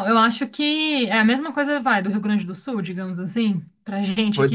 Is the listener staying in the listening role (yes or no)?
no